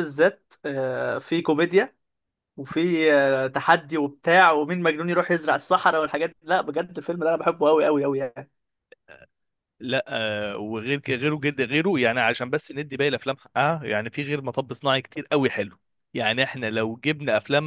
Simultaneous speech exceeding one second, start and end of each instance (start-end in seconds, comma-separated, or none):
none